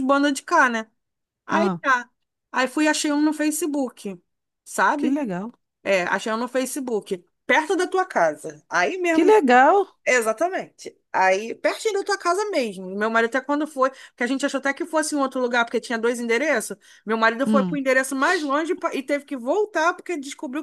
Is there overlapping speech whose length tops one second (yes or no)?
no